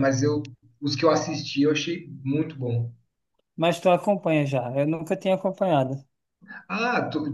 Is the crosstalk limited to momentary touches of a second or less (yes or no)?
yes